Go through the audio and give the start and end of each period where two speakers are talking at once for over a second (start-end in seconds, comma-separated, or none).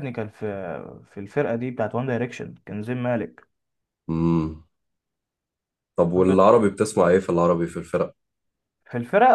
none